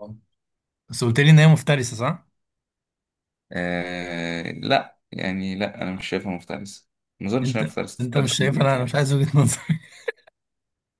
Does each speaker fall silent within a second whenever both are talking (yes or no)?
no